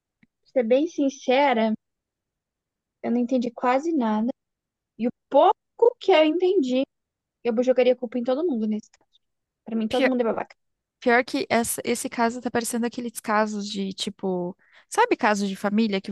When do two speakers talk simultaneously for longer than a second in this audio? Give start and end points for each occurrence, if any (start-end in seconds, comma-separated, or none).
none